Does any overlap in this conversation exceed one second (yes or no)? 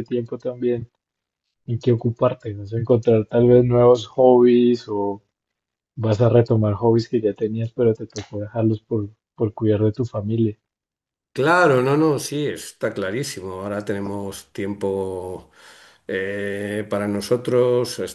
no